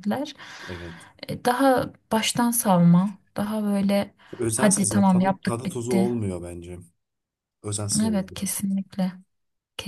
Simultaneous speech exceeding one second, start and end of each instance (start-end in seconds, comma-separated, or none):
4.5-6.1